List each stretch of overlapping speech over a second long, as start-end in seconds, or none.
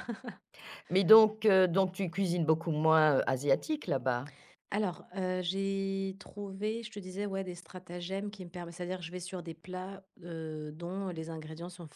none